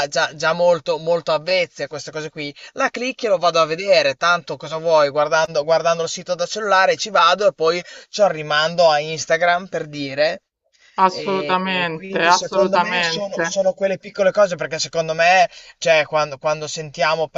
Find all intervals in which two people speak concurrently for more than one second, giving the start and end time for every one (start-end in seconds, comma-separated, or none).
11.2-13.6